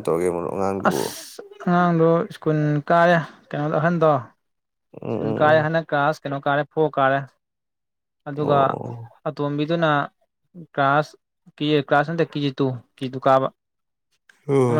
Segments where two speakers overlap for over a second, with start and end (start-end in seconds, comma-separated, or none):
none